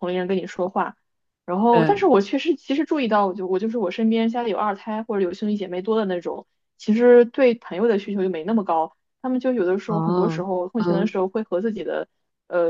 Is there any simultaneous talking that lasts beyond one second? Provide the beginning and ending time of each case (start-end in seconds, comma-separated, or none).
9.9-11.2